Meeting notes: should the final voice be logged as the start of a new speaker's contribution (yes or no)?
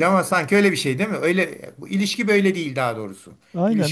yes